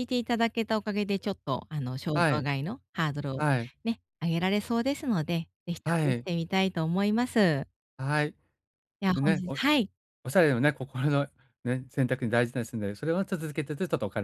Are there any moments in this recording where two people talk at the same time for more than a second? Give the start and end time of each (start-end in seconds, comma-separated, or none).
none